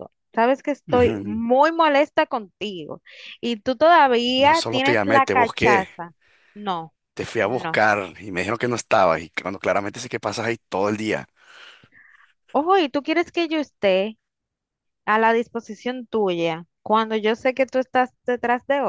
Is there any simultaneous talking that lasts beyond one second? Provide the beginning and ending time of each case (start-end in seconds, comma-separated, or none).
4.3-5.9